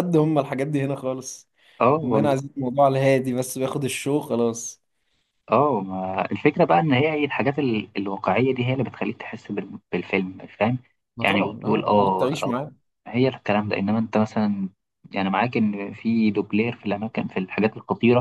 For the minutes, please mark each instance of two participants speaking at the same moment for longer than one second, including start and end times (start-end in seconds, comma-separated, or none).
11.2-12.5